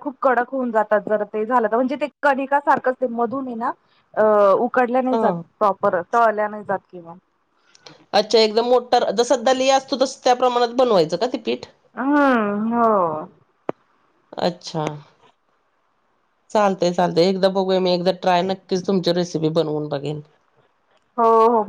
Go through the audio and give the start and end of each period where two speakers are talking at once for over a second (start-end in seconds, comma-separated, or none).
none